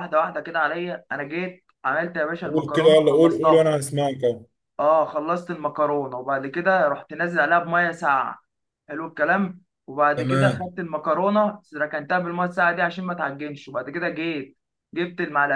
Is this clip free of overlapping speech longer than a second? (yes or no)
no